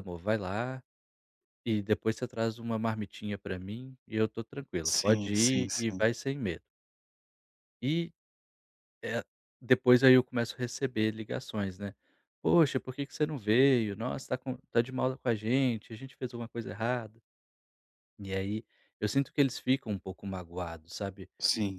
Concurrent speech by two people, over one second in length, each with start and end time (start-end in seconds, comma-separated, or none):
4.8-6.0